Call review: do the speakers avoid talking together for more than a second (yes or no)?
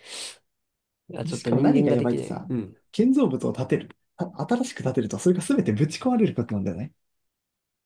no